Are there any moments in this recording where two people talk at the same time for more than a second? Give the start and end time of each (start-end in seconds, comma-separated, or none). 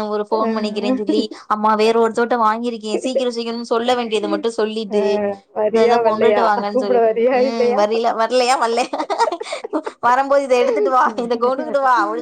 5.7-7.8